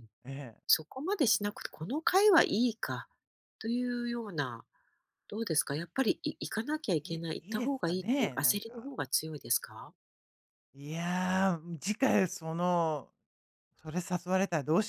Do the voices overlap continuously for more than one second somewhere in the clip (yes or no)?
yes